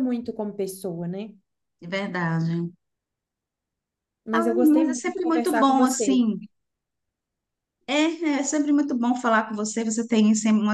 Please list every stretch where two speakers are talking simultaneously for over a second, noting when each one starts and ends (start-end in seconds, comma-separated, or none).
4.3-6.2